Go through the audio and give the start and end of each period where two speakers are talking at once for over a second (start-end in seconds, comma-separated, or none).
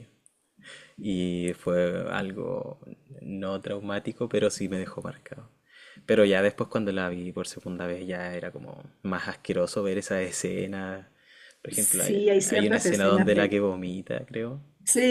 11.7-13.6